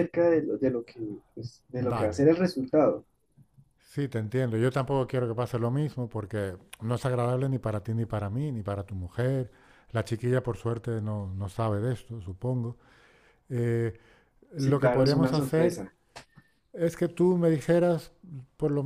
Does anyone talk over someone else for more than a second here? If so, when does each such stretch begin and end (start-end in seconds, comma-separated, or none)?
14.6-15.8